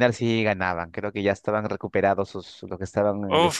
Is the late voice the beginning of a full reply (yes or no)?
yes